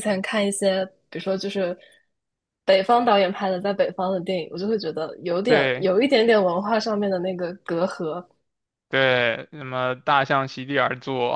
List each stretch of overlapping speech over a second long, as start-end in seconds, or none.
none